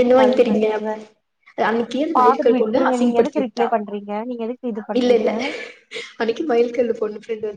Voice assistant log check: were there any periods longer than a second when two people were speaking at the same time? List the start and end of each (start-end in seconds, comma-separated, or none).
2.2-3.8